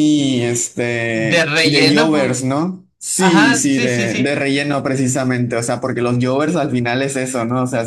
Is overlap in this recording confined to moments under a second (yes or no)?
no